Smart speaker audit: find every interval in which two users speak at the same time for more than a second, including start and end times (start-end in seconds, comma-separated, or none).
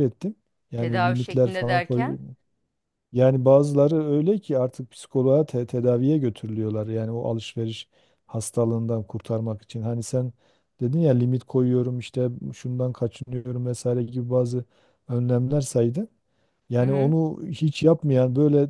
0.8-2.1